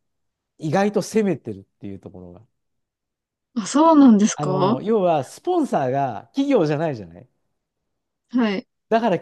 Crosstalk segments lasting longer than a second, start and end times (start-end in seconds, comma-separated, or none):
none